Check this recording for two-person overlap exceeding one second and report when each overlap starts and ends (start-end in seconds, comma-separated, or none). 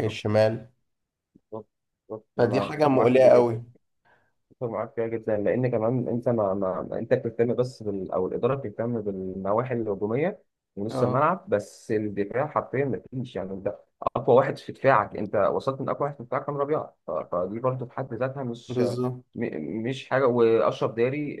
2.4-3.6